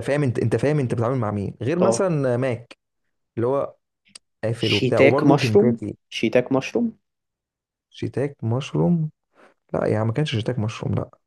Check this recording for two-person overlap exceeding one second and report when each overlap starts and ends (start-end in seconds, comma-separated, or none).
4.6-6.0